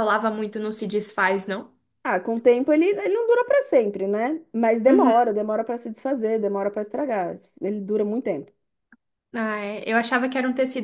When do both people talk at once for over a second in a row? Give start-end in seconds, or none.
none